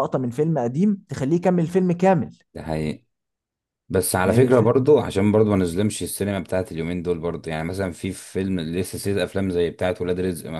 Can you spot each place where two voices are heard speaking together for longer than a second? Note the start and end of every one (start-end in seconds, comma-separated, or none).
none